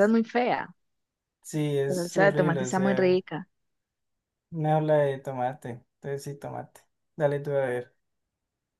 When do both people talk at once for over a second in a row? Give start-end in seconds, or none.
1.9-3.2